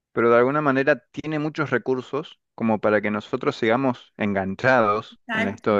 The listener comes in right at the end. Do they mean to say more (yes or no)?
yes